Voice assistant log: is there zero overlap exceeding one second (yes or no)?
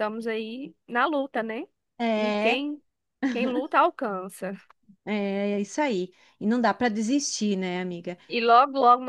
yes